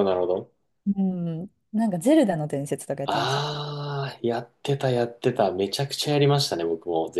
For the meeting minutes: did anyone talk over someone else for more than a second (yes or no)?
no